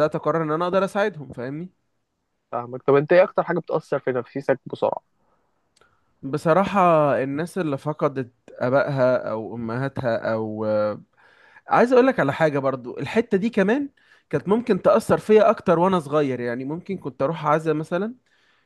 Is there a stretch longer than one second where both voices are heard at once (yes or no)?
no